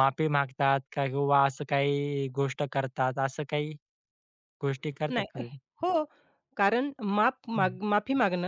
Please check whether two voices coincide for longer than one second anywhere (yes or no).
no